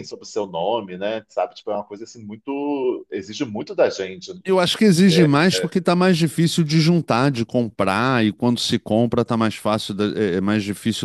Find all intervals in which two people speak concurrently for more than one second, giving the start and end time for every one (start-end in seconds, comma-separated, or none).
none